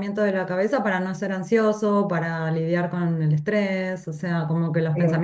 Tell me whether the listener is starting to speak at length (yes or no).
no